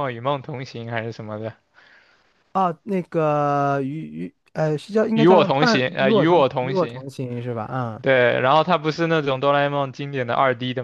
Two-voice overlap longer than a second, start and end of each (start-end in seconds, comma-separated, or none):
5.1-7.0